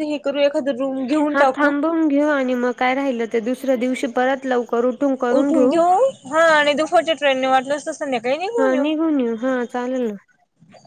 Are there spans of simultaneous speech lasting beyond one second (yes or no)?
no